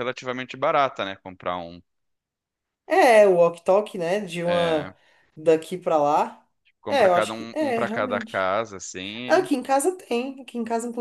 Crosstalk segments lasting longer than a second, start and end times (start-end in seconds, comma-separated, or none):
6.9-8.5